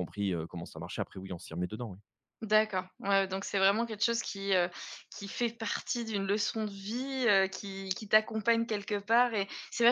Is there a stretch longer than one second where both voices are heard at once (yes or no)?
no